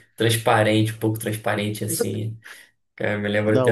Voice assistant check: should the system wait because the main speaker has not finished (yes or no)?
no